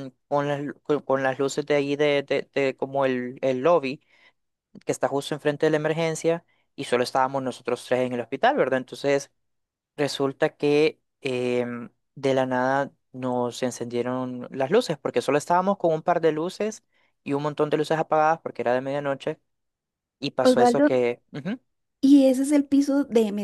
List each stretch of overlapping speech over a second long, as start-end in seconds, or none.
none